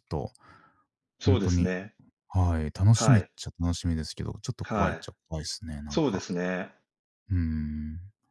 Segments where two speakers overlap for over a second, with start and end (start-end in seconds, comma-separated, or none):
none